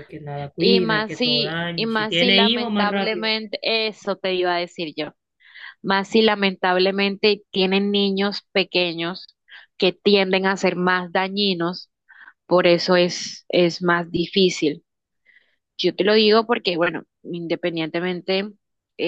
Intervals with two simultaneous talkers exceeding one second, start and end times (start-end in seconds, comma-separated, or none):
0.6-3.3